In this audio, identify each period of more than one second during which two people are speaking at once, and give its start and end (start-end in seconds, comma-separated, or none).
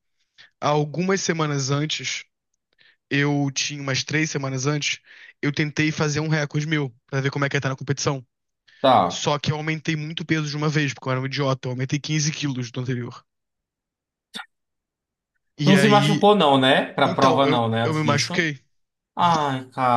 17.0-18.5